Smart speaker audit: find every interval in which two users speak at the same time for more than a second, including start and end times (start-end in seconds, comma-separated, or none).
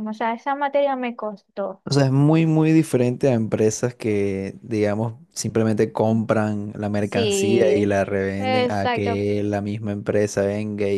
7.0-9.2